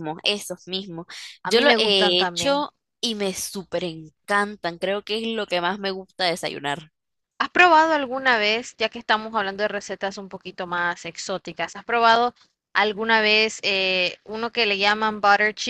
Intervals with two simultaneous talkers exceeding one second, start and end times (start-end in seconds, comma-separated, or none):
1.4-2.6